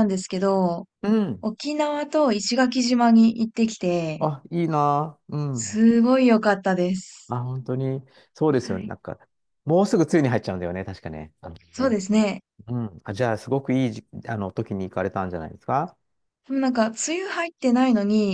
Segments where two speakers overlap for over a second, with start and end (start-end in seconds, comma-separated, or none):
none